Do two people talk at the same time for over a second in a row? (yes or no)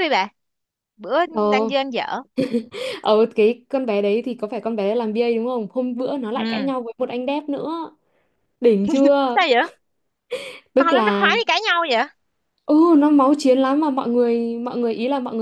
no